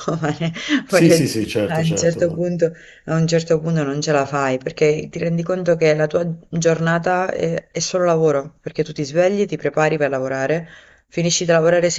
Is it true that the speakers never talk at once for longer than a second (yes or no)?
no